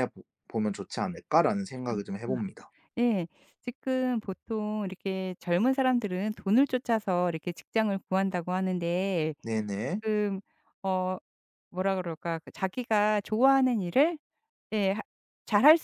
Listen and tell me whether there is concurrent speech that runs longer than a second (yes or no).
no